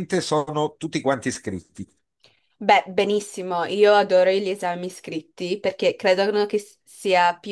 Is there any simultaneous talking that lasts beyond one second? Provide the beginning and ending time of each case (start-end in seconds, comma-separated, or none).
none